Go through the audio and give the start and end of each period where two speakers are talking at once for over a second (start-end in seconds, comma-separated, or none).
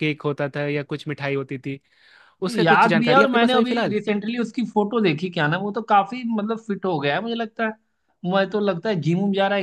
2.5-4.0